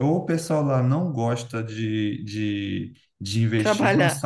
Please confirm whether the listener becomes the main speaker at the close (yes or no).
no